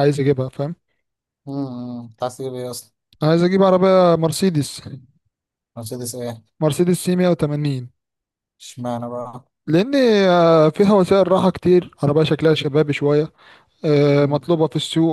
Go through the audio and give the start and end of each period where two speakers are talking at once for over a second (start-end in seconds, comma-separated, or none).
none